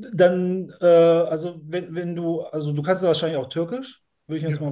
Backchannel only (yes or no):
yes